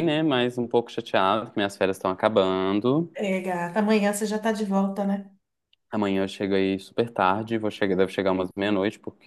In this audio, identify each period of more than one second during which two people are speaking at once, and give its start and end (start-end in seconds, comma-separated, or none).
none